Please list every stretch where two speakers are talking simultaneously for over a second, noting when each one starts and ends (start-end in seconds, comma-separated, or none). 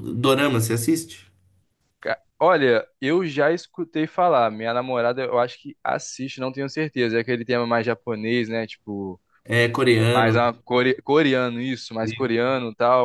none